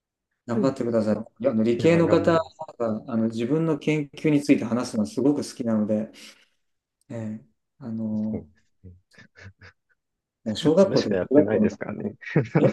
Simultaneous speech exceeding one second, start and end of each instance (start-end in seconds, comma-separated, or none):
10.5-12.1